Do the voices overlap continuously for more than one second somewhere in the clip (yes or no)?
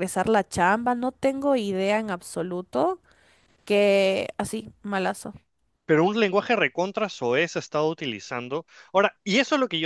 no